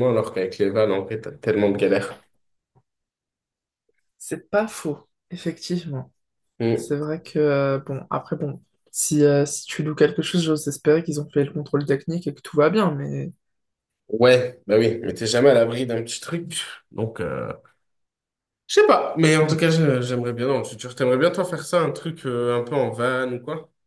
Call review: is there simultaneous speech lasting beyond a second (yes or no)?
no